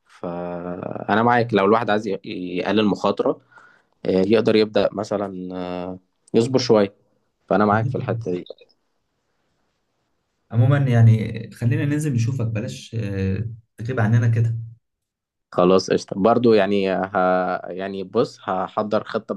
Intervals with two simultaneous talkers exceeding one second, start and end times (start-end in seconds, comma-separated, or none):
none